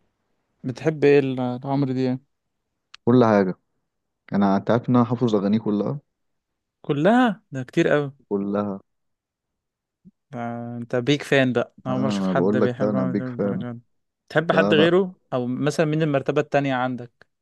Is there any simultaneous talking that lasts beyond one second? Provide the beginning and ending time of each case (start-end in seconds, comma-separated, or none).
11.9-13.6